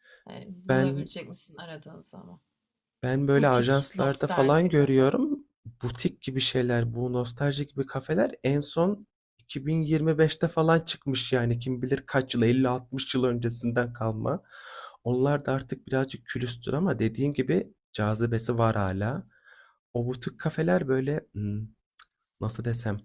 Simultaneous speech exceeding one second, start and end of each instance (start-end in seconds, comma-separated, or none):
3.4-5.1